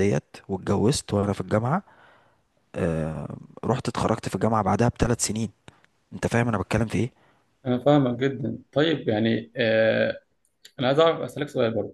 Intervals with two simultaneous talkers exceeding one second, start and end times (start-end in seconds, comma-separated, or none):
none